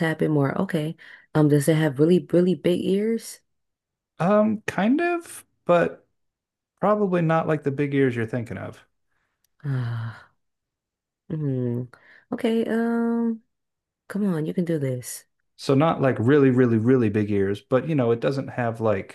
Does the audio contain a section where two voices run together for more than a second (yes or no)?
no